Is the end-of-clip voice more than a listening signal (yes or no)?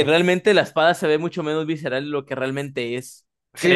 yes